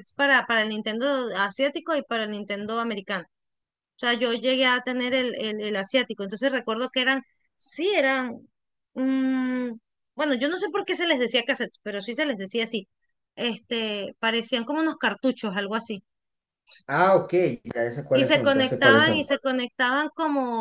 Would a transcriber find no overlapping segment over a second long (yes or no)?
no